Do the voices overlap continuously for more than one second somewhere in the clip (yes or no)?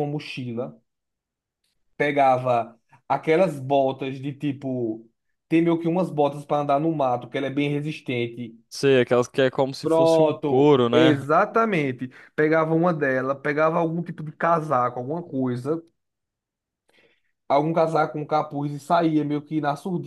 yes